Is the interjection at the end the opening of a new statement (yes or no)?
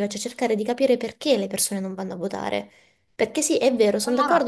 no